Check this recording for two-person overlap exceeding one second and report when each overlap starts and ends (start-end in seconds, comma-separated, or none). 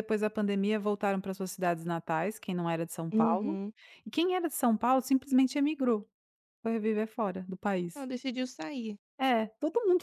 none